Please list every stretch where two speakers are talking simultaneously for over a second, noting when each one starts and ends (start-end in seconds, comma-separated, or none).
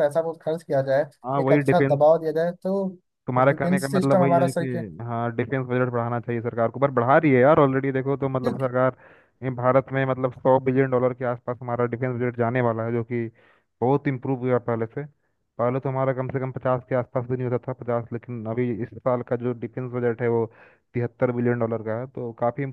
3.5-4.7